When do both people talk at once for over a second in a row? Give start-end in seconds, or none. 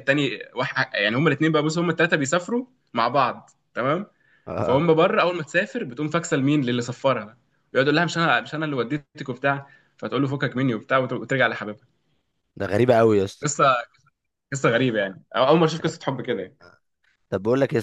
none